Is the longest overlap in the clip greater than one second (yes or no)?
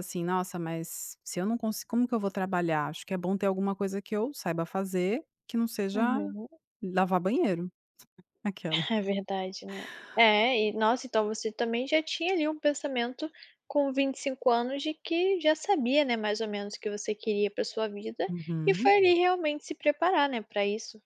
no